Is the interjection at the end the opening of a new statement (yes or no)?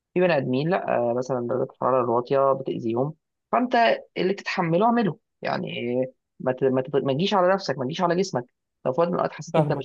yes